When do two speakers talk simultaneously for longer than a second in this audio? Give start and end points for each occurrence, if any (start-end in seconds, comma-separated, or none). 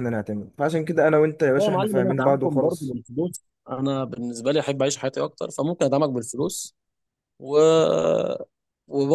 1.6-3.0